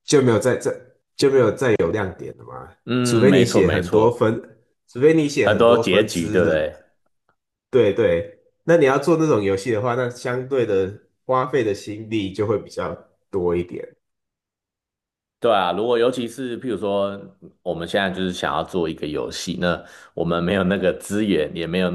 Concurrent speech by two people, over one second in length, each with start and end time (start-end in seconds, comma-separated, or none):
3.0-4.3, 5.4-6.6